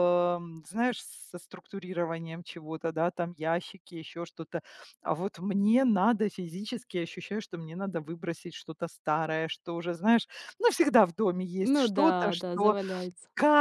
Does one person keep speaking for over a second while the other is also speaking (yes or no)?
yes